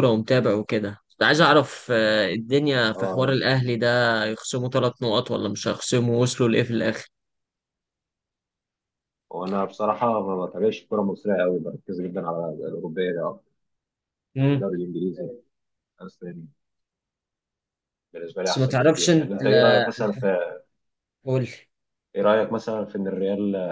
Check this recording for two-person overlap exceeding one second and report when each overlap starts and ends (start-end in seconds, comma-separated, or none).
18.4-19.9